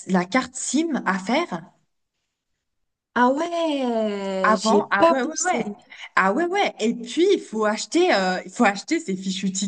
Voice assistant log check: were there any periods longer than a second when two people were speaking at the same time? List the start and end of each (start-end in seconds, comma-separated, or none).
4.4-5.7